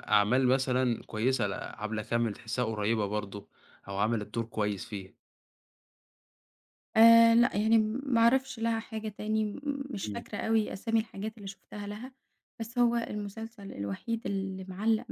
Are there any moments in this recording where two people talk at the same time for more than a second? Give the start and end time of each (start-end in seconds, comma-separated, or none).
none